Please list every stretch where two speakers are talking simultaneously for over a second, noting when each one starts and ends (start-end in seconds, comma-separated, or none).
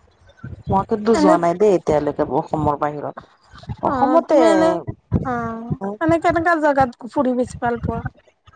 none